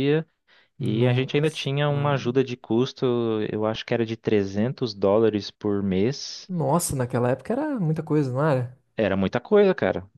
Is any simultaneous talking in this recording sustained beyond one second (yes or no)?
yes